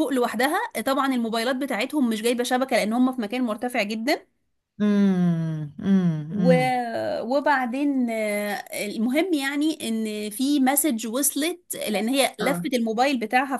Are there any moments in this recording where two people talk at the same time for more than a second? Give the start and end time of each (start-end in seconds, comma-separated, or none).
none